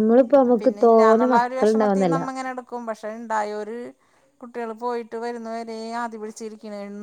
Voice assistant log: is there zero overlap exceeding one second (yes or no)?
no